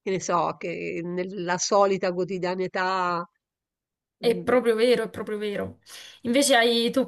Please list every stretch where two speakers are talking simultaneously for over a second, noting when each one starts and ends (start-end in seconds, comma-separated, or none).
none